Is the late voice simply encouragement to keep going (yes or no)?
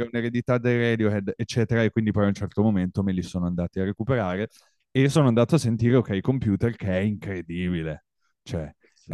yes